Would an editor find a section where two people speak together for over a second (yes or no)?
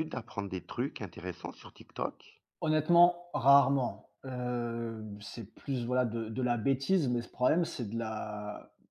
no